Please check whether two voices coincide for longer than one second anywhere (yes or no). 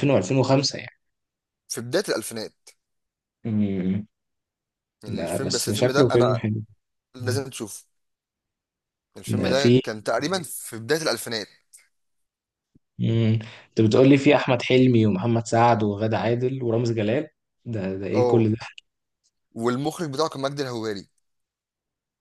yes